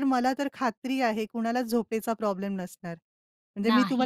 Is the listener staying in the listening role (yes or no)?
yes